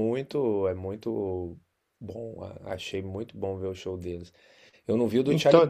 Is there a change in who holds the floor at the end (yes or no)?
no